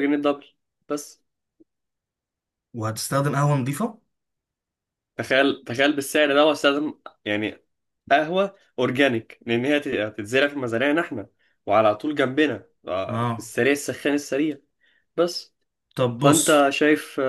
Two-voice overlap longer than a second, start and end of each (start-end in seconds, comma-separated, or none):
none